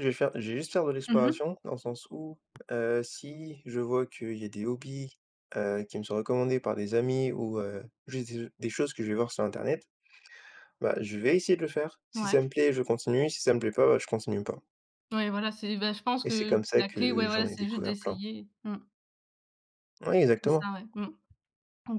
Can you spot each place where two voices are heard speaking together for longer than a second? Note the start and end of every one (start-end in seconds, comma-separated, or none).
16.2-18.2